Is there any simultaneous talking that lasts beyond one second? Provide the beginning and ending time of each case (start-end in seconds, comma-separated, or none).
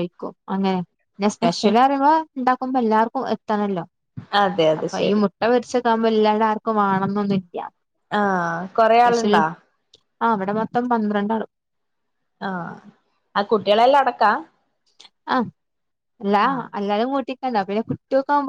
none